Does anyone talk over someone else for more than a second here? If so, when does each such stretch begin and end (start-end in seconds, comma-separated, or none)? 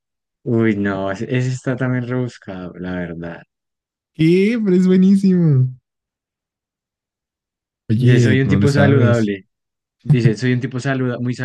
8.0-9.3